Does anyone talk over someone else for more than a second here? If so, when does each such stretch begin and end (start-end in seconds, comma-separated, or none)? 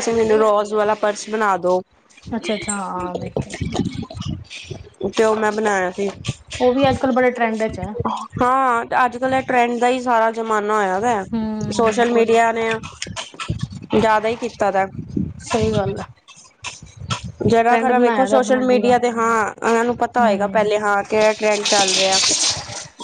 17.7-18.9